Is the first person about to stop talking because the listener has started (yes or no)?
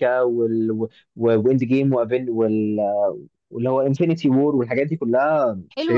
yes